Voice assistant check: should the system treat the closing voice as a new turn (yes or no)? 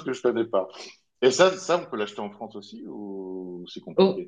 yes